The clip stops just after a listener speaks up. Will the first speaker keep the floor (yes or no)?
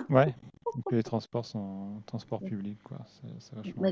no